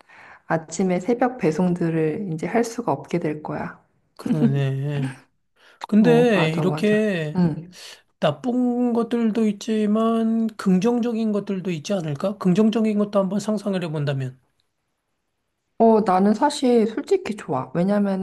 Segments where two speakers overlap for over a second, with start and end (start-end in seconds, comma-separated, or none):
6.0-7.4